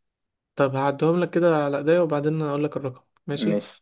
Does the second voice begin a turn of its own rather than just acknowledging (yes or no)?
no